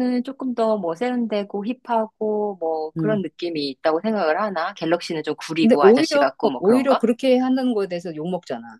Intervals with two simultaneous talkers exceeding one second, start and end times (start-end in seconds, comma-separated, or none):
5.6-7.0